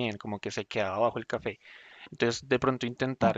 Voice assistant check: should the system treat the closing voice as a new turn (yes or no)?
no